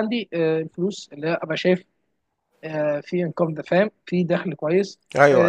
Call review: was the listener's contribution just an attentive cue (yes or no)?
yes